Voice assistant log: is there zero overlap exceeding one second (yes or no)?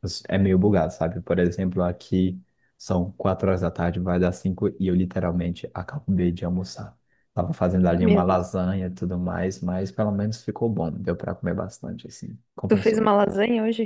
yes